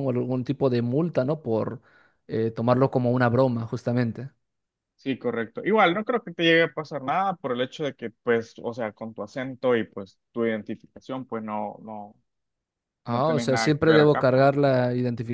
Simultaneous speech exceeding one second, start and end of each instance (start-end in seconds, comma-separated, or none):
13.0-14.5